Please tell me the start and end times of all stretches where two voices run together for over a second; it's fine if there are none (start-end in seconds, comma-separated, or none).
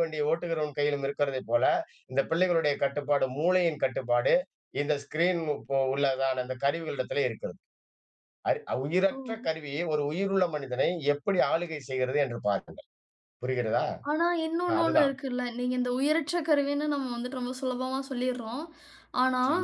none